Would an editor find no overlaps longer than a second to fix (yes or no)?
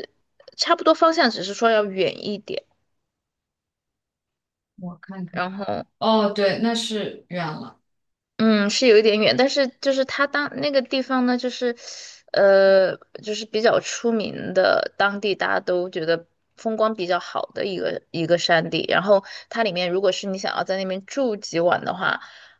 yes